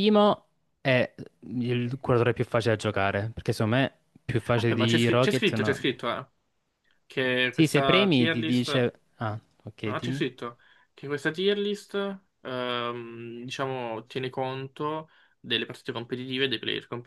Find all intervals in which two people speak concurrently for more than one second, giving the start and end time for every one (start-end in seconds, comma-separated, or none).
4.5-5.8, 7.5-8.9